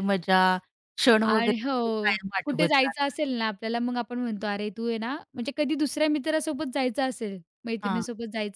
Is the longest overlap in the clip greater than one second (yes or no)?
yes